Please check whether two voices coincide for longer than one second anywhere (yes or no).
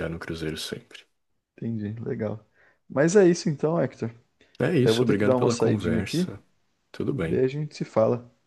yes